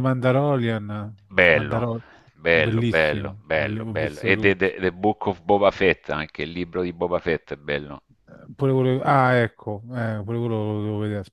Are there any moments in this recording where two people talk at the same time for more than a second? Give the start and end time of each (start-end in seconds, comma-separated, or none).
2.5-4.7